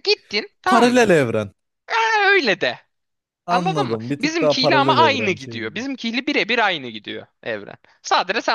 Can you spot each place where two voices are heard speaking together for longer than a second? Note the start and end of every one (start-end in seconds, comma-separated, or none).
3.5-5.8